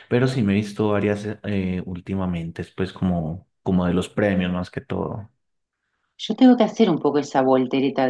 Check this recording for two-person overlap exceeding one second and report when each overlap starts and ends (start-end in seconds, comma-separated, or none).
none